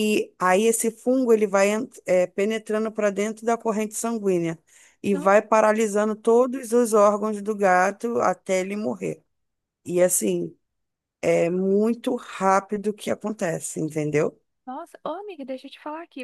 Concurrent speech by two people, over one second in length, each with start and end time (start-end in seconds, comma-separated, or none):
none